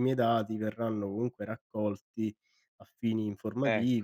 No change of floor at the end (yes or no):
yes